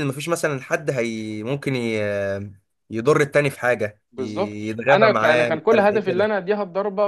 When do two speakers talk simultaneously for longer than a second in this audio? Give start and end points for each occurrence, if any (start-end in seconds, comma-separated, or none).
4.1-6.3